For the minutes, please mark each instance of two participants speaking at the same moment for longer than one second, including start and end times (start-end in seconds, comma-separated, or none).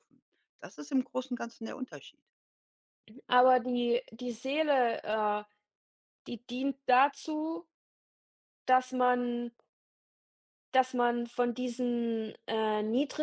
none